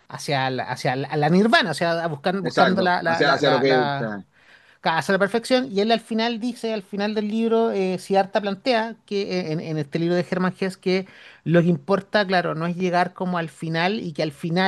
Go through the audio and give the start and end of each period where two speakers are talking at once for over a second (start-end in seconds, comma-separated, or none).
2.4-4.0